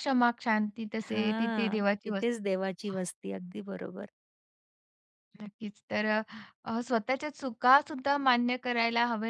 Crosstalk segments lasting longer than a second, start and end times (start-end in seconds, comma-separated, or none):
1.1-3.0